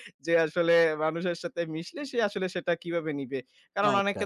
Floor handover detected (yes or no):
no